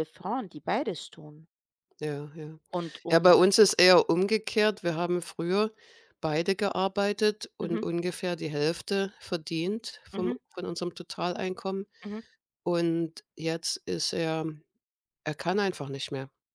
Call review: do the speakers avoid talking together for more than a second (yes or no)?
yes